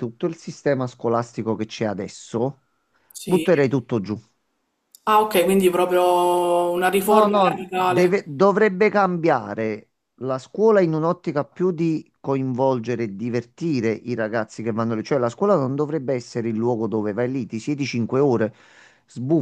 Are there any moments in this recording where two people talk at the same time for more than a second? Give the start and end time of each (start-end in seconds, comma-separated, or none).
7.1-8.3